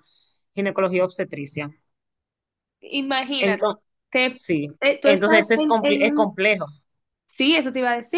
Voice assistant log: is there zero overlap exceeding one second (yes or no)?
no